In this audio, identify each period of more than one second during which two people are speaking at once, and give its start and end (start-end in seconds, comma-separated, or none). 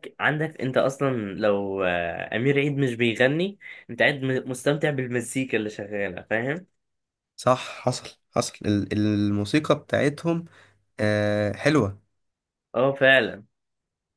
none